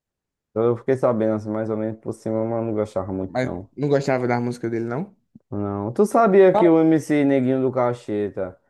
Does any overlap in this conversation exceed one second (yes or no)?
no